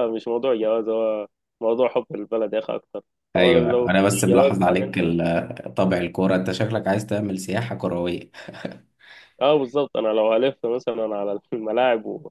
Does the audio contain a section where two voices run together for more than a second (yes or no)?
yes